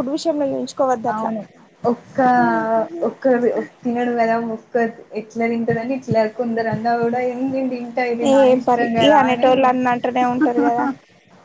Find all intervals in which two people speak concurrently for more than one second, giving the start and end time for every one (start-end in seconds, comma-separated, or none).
none